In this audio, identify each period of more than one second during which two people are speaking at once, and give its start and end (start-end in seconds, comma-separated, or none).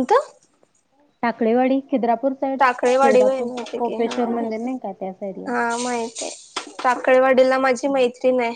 3.0-4.7